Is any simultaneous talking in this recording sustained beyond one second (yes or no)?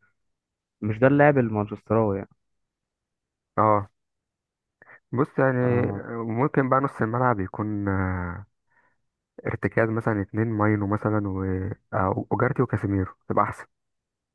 no